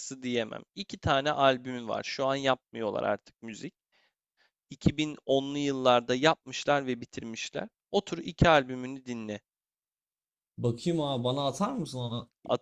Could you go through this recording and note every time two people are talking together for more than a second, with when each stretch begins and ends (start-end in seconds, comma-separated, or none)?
none